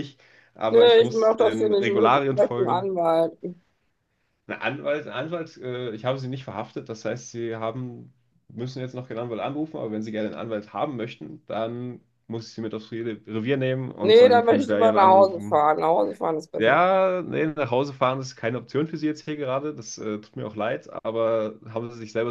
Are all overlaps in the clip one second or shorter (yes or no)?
no